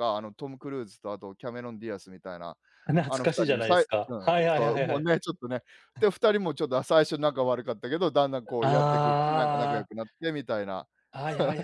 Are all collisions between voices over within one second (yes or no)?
no